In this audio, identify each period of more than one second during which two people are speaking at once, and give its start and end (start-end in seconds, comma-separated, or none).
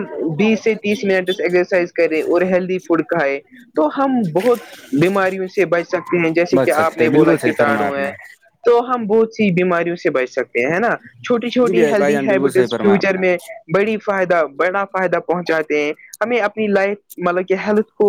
6.5-8.1, 11.7-13.2